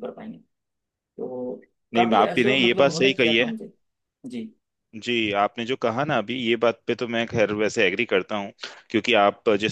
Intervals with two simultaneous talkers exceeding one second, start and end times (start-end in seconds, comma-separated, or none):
1.9-3.5